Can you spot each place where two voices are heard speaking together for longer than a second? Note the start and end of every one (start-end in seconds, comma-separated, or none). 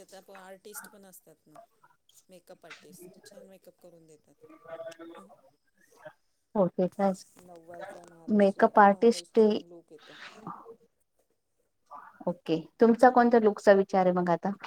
8.4-9.6